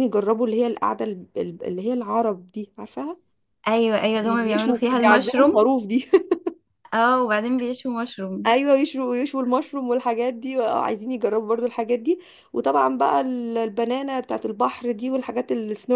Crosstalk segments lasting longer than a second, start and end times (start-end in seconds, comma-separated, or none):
4.2-5.6